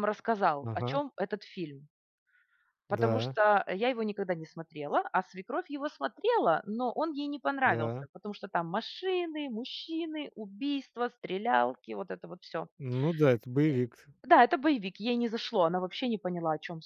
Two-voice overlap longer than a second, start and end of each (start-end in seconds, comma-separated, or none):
none